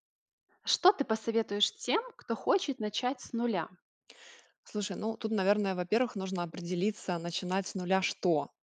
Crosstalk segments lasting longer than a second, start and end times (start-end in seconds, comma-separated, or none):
none